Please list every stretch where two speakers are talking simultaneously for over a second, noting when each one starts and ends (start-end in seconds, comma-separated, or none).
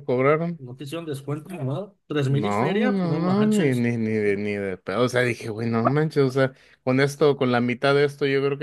2.2-3.9